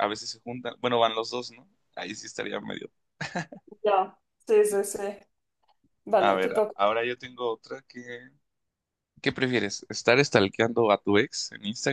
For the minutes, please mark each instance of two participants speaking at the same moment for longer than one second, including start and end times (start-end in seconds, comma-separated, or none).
none